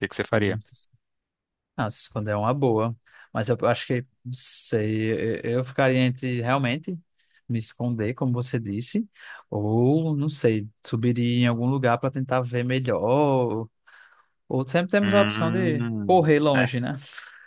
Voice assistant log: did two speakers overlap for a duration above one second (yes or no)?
yes